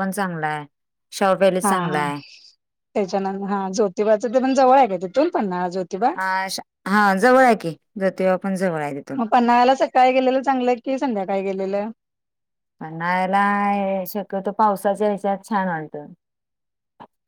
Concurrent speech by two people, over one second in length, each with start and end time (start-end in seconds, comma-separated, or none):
none